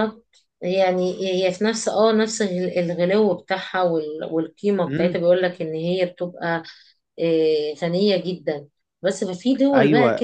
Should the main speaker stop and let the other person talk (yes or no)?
yes